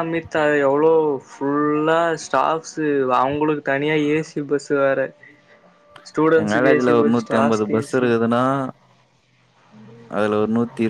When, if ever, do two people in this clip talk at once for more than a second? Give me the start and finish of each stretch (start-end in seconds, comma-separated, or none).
6.4-8.1